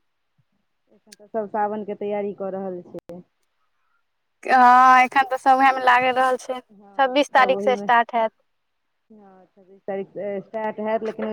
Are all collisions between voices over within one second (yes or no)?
no